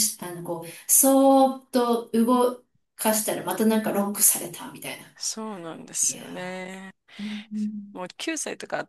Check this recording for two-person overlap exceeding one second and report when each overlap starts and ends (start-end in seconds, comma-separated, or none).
none